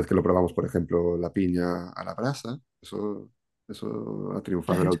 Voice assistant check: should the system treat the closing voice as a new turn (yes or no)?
no